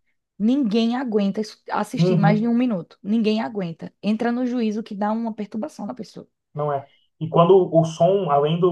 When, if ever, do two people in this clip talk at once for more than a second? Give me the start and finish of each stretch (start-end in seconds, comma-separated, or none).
none